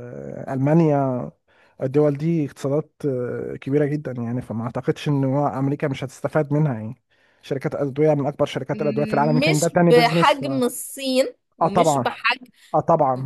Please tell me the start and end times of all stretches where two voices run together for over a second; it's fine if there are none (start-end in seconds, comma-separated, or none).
8.7-10.4